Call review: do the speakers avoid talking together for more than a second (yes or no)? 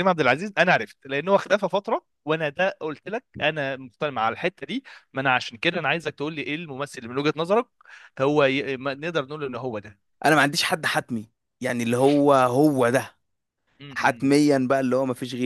yes